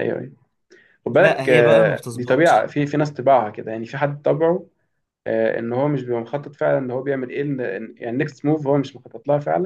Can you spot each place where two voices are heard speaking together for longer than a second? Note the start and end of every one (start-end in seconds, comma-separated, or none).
1.1-2.7